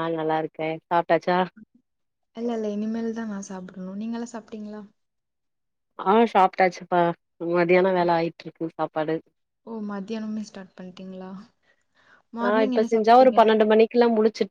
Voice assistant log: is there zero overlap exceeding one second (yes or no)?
yes